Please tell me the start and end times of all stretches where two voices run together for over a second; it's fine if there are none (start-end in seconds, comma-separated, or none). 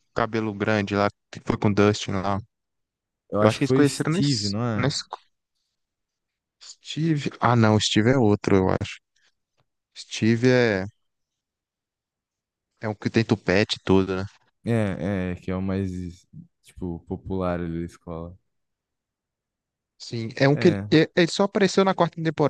3.4-4.9